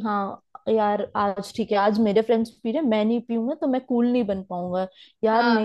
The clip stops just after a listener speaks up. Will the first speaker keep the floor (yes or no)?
yes